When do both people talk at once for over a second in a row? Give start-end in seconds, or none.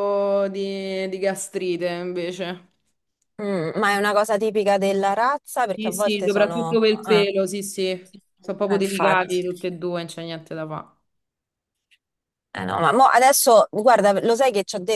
5.7-7.3